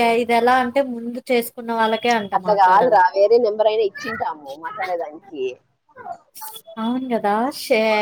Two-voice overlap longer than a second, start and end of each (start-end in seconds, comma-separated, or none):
none